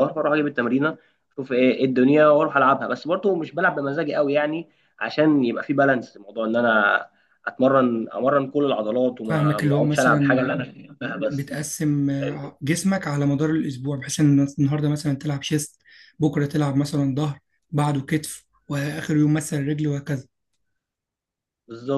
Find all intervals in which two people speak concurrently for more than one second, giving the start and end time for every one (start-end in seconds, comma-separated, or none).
9.2-10.5